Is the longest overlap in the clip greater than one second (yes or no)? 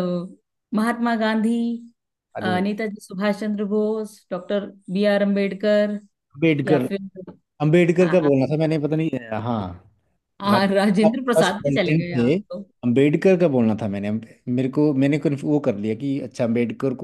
yes